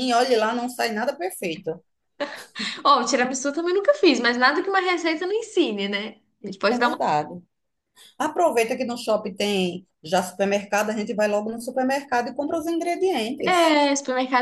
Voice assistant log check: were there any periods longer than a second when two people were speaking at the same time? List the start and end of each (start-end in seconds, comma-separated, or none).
none